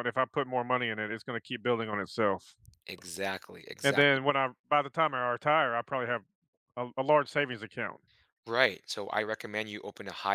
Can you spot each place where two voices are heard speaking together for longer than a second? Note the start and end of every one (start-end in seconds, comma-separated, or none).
none